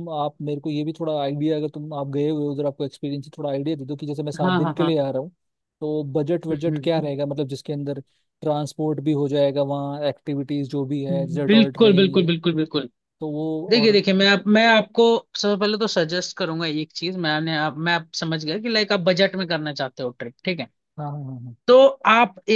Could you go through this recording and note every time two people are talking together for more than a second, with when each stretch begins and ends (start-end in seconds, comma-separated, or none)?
11.1-12.3